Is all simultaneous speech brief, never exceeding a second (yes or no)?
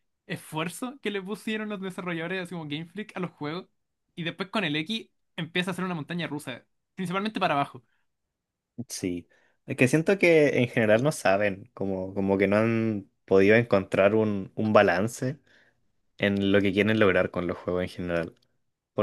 yes